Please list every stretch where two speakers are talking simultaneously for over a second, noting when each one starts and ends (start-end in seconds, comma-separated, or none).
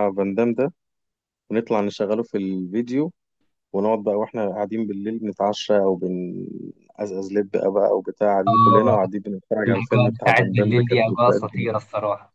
9.7-11.8